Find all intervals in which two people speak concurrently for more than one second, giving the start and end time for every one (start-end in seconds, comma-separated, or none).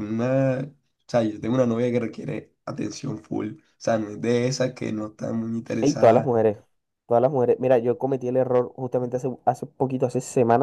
none